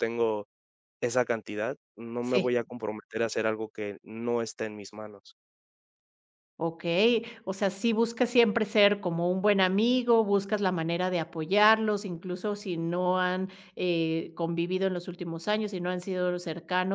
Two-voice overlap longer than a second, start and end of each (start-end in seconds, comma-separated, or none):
none